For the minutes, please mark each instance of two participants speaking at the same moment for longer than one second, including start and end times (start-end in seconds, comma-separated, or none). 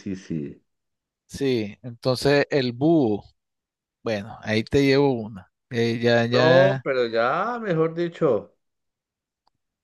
none